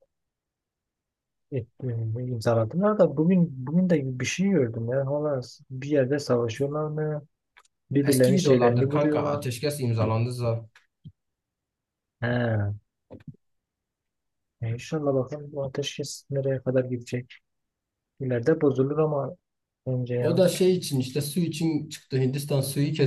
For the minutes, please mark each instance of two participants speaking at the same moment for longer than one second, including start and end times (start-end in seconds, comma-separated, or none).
8.0-9.5